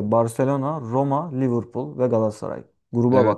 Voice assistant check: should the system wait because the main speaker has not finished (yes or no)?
no